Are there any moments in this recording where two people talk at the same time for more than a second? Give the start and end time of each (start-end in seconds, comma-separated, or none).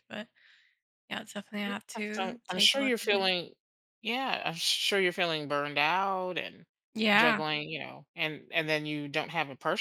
1.6-3.3